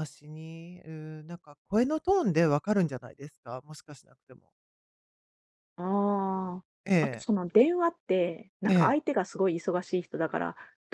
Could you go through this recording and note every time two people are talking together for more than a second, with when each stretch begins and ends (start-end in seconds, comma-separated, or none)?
none